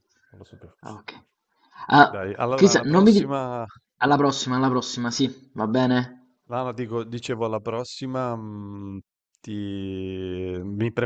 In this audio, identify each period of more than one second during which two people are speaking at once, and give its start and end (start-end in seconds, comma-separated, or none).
2.0-3.3